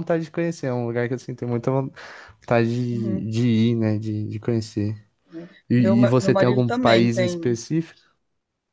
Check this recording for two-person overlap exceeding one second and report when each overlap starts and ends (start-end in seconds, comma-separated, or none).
5.7-7.4